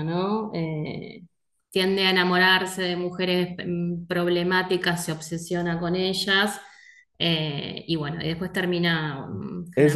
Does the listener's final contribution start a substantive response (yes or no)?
yes